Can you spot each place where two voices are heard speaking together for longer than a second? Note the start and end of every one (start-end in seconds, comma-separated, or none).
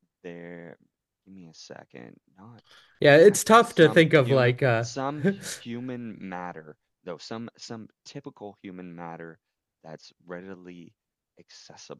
3.1-4.8